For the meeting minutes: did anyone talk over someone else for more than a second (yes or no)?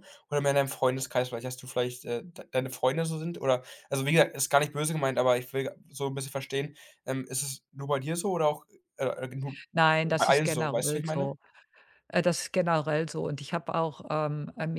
yes